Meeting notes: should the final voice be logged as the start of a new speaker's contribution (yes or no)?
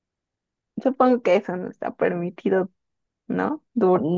yes